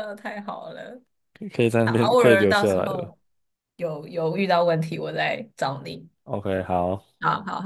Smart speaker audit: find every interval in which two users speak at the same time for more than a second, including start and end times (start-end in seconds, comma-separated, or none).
1.8-3.1